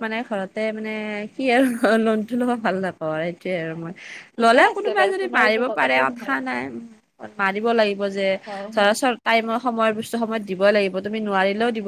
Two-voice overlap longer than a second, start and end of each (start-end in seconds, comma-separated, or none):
4.5-6.4